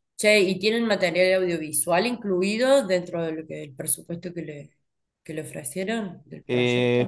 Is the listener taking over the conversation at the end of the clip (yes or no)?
yes